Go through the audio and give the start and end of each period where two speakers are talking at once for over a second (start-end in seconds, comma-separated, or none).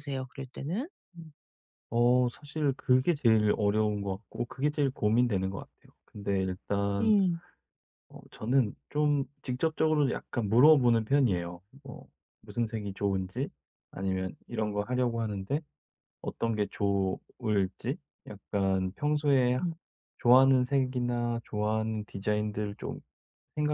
none